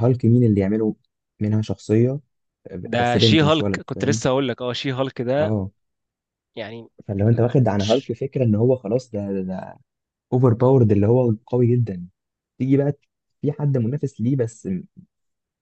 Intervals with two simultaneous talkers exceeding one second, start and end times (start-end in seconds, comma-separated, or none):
2.9-4.2